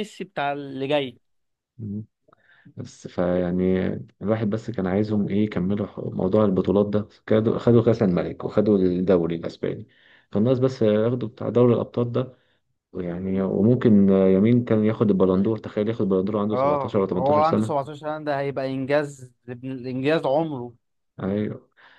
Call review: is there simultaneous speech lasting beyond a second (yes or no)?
yes